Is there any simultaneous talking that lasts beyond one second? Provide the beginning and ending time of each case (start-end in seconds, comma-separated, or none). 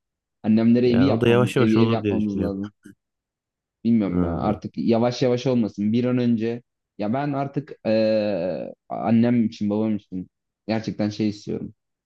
0.8-2.5